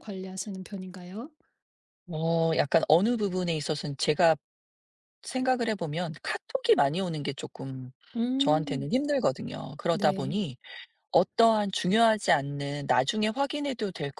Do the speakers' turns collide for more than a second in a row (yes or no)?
no